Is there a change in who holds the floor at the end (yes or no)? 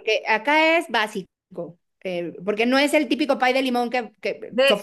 yes